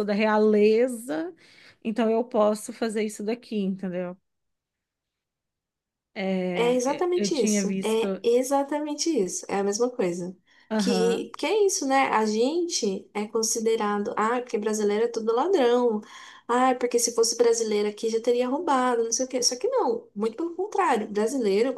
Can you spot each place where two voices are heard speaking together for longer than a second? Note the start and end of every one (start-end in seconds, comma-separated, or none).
6.5-8.1